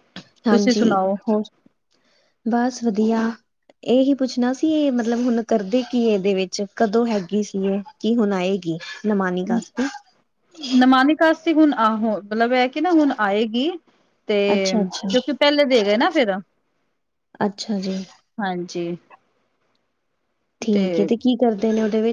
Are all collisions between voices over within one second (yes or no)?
yes